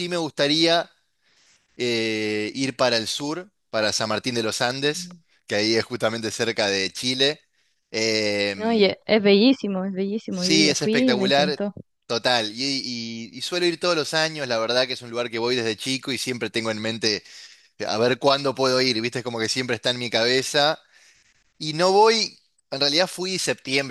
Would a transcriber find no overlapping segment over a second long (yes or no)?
no